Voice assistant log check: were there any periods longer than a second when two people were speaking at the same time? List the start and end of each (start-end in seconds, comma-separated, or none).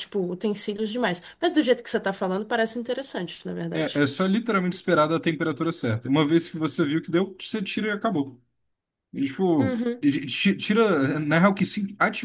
none